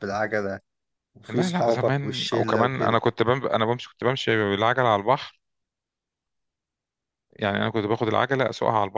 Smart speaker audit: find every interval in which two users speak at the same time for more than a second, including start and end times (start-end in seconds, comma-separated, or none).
1.3-3.0